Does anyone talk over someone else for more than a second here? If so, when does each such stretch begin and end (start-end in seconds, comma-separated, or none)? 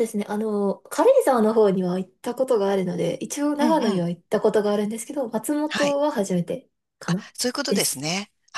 none